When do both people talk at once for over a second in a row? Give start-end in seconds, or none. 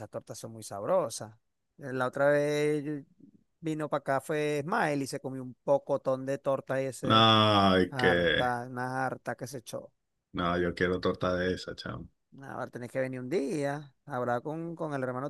none